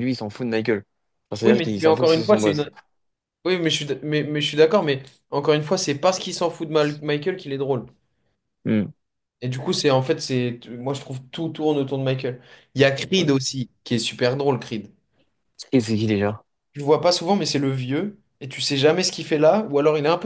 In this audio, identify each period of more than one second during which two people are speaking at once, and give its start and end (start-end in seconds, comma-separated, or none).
1.4-2.7